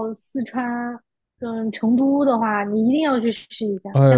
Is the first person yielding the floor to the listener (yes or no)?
yes